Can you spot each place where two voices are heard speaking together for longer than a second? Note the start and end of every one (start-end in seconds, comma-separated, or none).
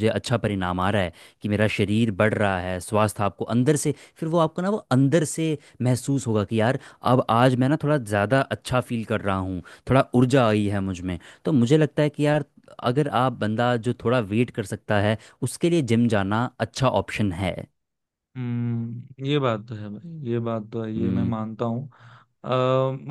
none